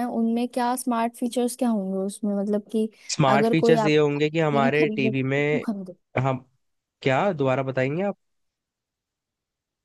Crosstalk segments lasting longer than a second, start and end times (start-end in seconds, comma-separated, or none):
3.4-5.4